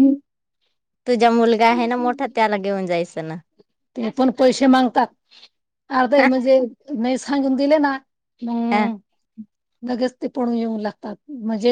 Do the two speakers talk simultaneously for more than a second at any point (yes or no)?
no